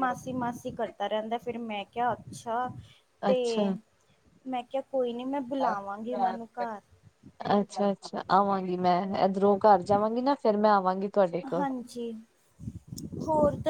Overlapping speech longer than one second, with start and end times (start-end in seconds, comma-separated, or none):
none